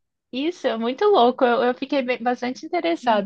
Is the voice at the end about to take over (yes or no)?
yes